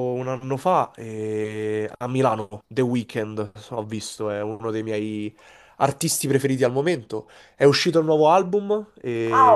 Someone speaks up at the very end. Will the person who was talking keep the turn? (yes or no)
no